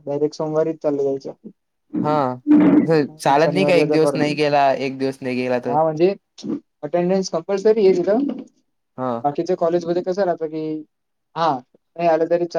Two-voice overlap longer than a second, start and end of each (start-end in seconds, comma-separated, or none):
2.9-4.3